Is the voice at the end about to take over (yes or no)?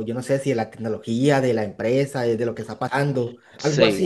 yes